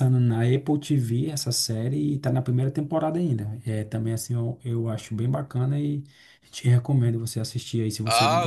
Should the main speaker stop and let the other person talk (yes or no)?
yes